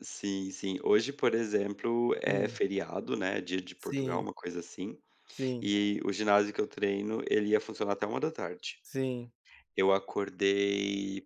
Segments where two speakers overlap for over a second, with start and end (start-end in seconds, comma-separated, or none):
none